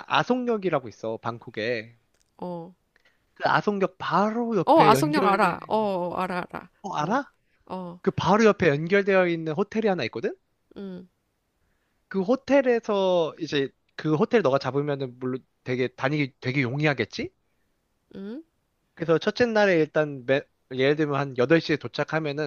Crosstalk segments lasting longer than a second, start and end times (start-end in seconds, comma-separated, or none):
4.6-5.9